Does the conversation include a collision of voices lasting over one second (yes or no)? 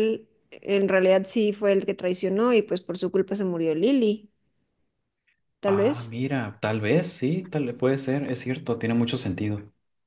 no